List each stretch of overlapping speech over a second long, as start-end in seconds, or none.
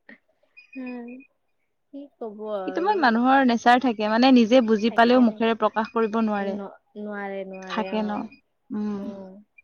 none